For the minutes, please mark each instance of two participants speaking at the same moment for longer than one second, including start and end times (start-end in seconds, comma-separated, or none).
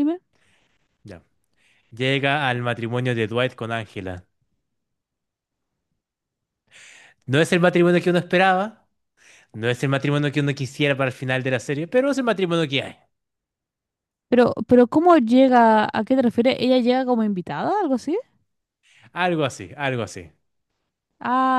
none